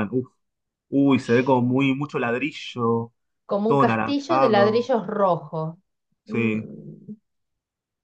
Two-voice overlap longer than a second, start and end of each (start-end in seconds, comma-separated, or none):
3.6-4.9